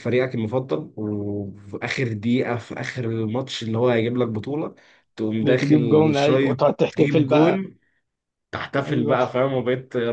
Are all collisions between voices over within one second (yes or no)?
no